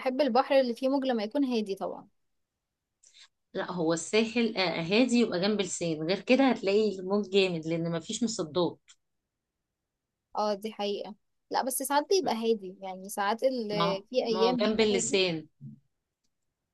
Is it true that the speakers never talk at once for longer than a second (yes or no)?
no